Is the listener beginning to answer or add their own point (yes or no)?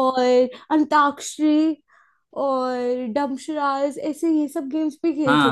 yes